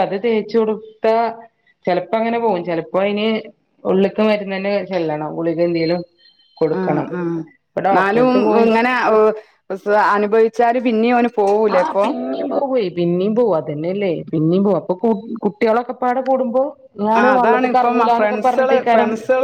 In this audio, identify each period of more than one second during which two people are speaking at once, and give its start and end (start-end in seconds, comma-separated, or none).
17.2-18.8